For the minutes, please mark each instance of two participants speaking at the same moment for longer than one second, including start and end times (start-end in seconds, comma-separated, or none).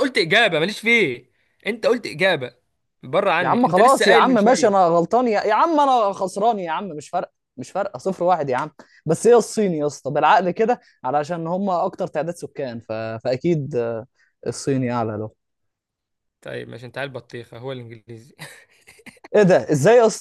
3.4-4.9